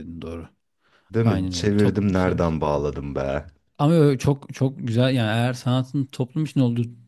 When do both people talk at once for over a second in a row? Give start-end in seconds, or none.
1.2-2.6